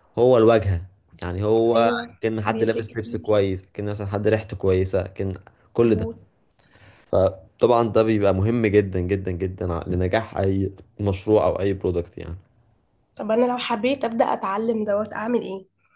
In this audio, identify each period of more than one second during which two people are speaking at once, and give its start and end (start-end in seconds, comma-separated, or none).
1.7-3.4